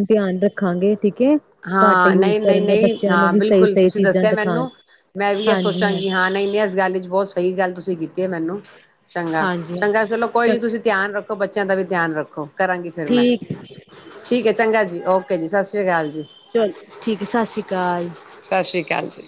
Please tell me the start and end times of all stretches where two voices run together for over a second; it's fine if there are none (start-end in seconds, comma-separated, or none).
1.8-4.7